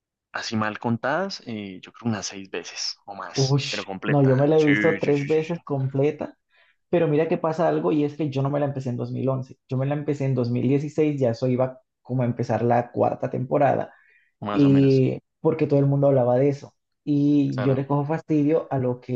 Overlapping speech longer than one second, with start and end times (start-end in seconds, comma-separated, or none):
3.3-5.6